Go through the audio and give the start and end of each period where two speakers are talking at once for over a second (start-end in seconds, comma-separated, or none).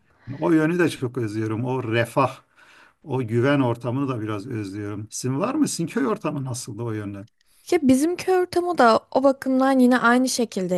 none